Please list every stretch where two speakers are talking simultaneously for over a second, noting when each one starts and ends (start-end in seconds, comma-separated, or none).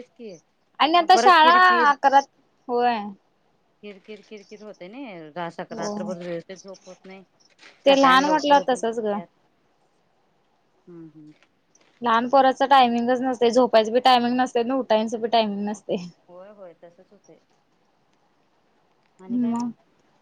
7.9-9.2